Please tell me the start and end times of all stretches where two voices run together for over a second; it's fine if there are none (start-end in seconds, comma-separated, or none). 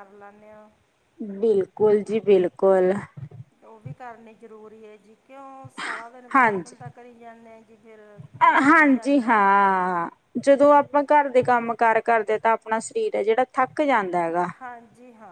none